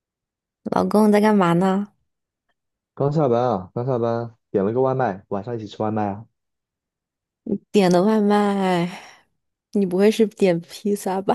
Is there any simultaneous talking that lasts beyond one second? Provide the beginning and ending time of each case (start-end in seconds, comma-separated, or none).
none